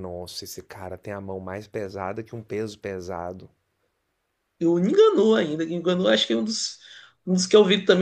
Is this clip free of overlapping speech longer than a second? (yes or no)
yes